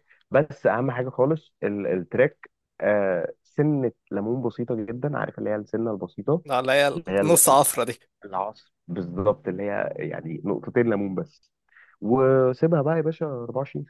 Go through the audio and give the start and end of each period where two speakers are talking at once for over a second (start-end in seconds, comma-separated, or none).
none